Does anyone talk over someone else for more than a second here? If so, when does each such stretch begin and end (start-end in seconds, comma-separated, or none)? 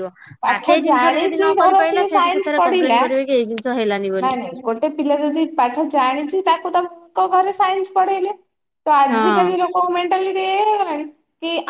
0.5-3.1